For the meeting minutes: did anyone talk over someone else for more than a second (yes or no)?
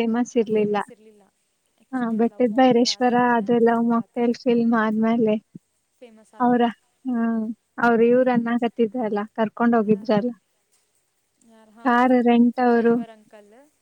yes